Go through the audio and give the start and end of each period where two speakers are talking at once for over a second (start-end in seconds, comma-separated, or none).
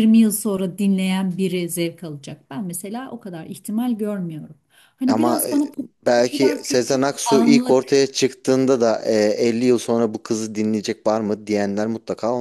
6.2-7.8